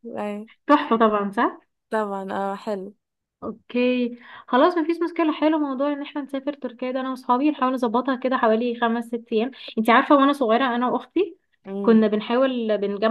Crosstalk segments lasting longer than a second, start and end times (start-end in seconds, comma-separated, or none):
none